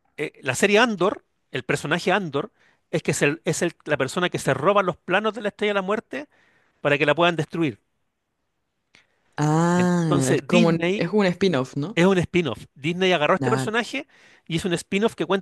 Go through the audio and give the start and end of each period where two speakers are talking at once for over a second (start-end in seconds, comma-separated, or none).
9.8-11.1